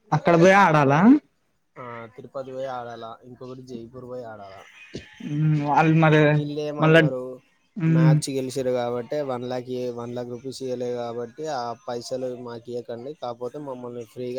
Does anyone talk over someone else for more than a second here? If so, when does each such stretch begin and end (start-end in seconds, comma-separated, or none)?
none